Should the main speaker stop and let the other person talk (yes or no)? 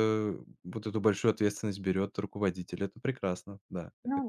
yes